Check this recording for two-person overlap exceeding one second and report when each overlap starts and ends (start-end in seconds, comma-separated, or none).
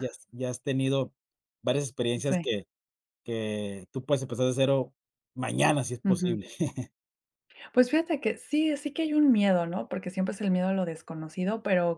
none